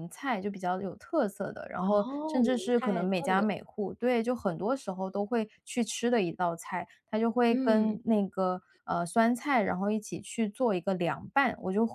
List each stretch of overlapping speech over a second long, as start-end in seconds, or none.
1.8-3.5